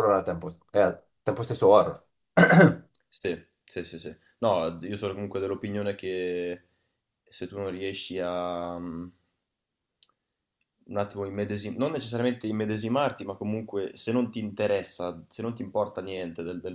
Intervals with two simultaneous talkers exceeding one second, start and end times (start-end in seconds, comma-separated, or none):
none